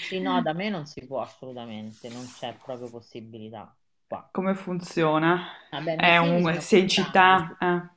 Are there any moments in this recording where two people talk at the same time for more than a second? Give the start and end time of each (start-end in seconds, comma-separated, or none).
5.9-7.5